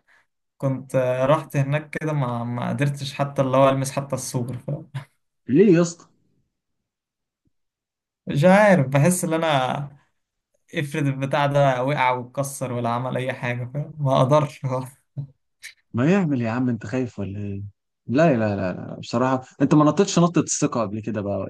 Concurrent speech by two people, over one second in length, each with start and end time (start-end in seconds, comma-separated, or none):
none